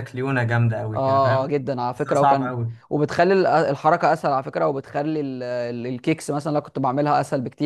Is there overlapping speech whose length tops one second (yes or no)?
yes